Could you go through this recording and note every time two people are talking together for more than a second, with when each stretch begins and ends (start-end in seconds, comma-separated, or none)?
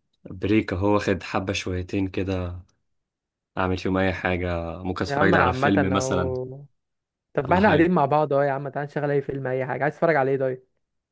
5.1-6.3